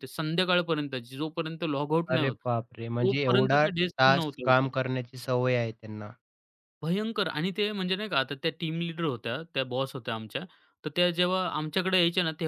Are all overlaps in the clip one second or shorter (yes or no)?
no